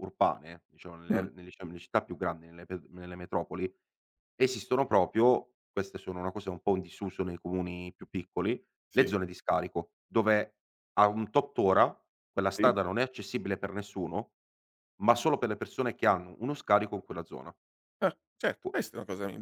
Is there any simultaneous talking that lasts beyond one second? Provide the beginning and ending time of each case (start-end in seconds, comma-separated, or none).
none